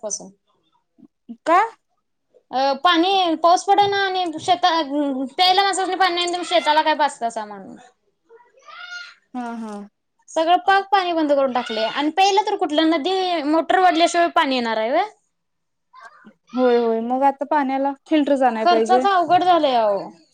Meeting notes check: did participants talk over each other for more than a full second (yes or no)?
no